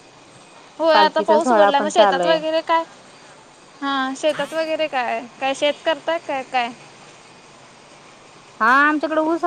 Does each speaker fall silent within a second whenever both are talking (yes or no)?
no